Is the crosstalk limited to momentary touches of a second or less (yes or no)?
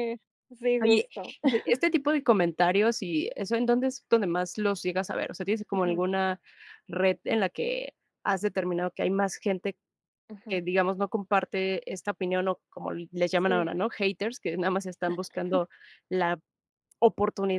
yes